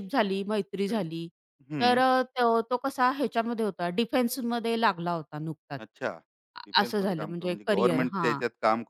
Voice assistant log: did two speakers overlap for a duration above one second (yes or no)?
yes